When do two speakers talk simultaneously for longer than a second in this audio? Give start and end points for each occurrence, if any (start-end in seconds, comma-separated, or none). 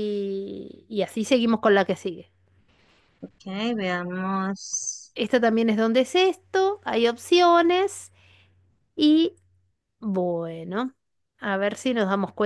none